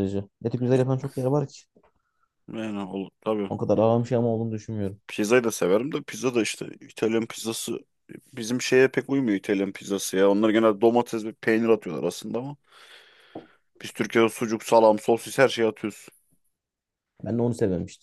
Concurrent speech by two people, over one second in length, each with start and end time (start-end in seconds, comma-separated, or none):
none